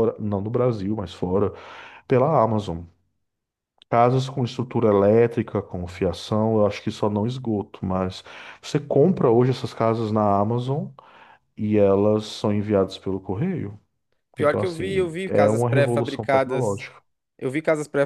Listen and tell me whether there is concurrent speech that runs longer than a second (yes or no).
yes